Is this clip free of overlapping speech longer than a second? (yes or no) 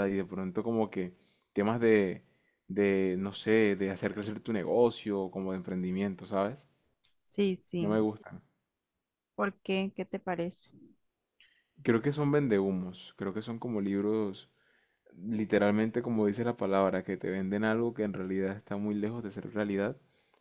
yes